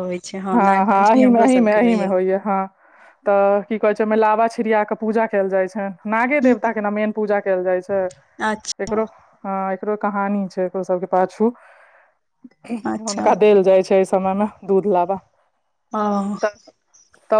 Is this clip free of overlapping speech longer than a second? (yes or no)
no